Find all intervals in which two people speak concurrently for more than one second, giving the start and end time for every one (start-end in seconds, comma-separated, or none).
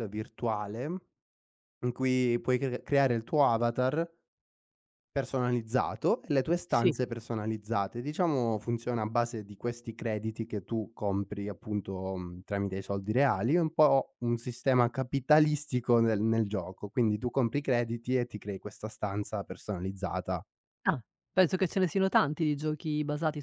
none